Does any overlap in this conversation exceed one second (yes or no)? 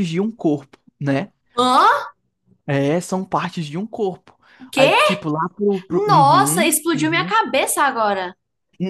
yes